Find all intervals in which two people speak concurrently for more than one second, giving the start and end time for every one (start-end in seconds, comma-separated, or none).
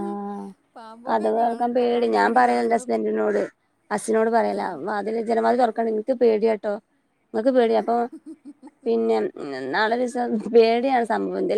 1.1-2.9